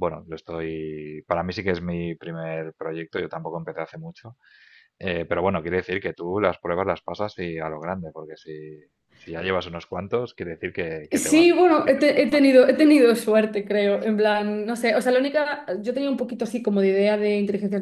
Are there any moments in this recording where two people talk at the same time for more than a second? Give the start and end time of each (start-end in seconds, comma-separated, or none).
11.1-12.6